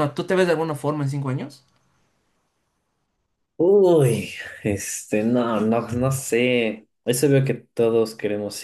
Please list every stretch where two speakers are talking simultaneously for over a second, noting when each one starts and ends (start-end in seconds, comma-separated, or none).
none